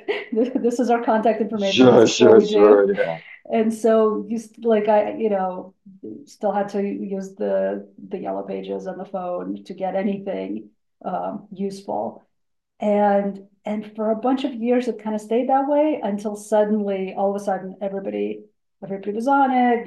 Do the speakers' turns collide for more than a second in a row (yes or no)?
yes